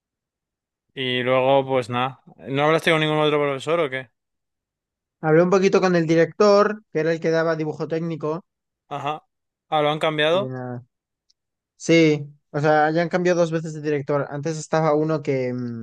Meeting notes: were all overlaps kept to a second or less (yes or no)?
yes